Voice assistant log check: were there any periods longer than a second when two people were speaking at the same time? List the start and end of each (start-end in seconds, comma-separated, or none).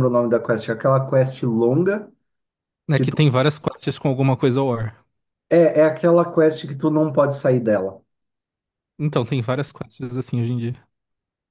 none